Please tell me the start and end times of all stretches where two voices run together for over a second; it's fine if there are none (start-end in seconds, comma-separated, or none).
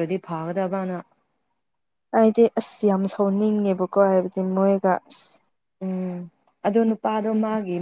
none